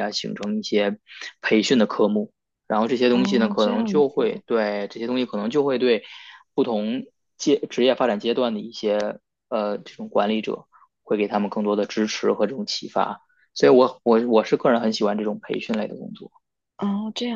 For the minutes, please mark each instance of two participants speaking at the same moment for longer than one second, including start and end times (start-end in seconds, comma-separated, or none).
3.1-4.4